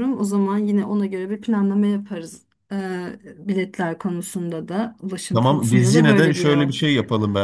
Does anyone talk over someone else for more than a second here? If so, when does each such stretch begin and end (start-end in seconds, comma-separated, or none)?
5.3-6.7